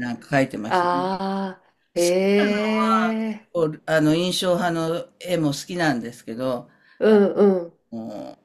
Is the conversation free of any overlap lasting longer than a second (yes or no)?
yes